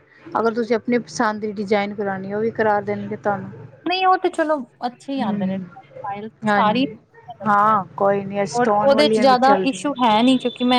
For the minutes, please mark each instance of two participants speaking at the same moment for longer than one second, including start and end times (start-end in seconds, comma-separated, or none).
8.6-10.2